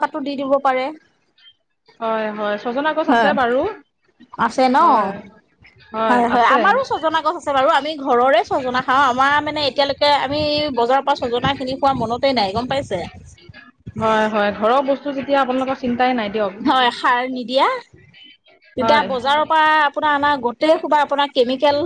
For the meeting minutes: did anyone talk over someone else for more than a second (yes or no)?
no